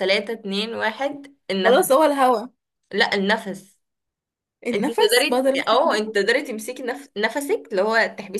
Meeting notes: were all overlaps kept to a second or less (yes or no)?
no